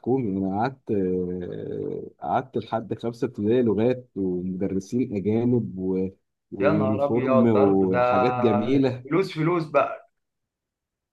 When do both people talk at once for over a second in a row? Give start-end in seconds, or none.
6.6-8.1